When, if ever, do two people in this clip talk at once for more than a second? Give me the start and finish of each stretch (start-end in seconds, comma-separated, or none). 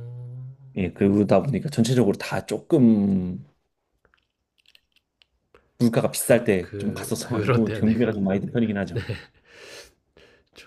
6.2-8.3